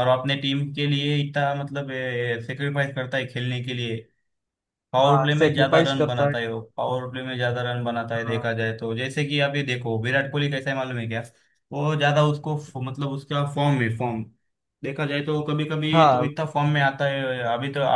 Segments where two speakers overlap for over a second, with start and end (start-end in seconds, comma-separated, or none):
5.0-6.5